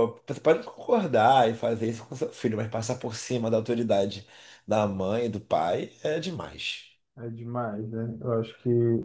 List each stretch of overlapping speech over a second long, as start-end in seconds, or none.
none